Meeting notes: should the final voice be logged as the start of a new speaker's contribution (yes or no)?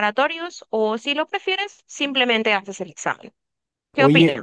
yes